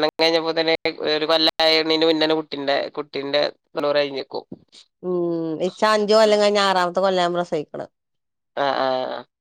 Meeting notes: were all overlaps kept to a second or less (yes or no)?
yes